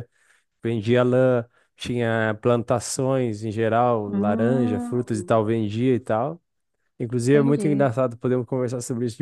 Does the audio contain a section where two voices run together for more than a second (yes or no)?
yes